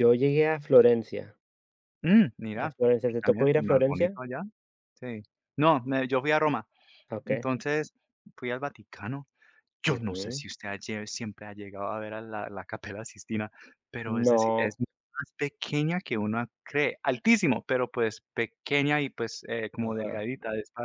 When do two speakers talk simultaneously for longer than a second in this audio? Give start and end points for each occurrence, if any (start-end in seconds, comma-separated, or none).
2.6-4.2